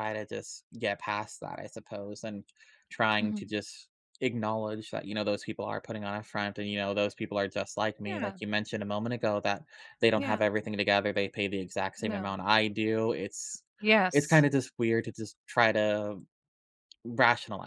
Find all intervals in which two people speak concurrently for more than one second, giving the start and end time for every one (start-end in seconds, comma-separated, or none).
none